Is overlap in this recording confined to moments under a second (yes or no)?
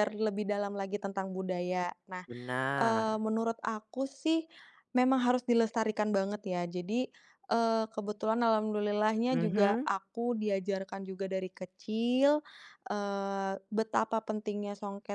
yes